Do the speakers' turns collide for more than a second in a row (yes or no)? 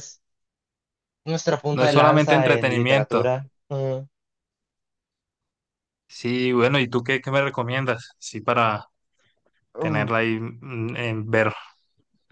yes